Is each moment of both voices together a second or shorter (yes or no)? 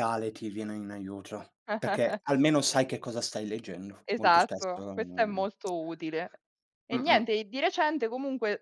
no